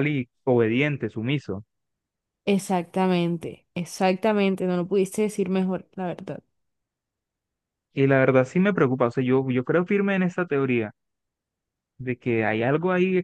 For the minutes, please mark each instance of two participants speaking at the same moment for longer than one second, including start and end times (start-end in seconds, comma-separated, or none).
none